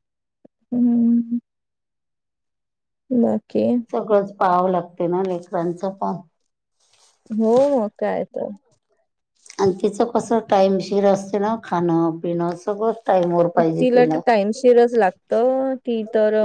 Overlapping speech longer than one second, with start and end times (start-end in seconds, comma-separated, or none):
none